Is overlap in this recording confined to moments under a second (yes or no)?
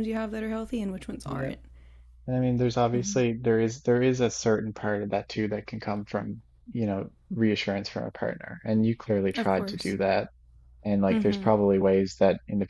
yes